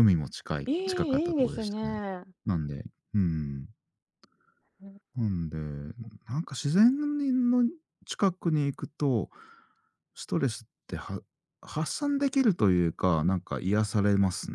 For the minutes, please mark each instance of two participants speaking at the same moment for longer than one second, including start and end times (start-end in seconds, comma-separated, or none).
0.6-2.0